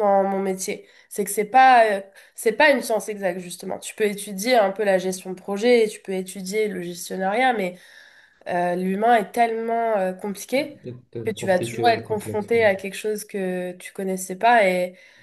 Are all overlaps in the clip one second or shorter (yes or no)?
no